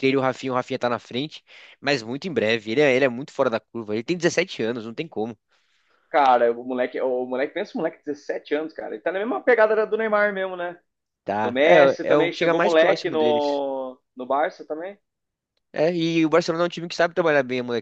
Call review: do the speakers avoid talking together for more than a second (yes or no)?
no